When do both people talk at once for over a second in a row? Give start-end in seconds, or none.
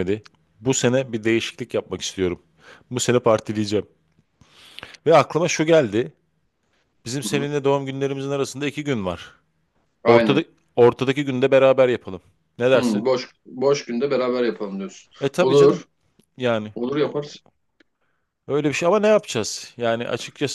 none